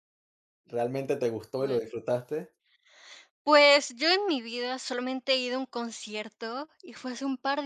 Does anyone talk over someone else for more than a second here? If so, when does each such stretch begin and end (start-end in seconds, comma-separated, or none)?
none